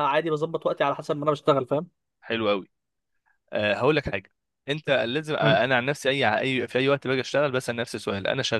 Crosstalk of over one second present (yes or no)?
no